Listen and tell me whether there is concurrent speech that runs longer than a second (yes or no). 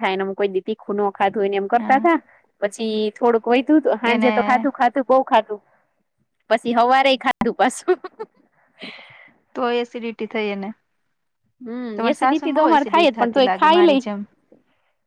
yes